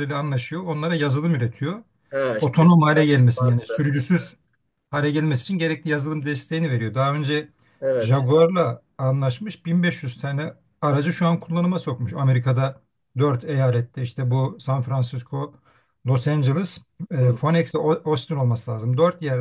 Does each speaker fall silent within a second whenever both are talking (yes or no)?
no